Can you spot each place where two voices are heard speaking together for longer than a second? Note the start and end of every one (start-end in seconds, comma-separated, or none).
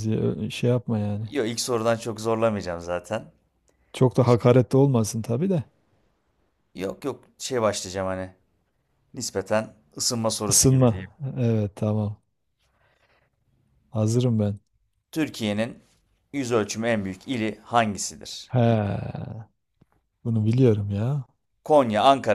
none